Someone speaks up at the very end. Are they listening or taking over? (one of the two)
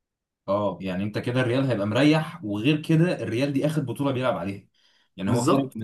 listening